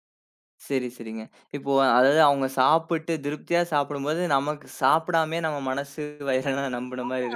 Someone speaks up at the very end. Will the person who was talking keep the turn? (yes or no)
no